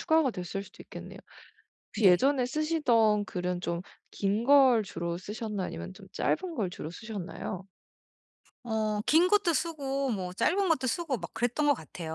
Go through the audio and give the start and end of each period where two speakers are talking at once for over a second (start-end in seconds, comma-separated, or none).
none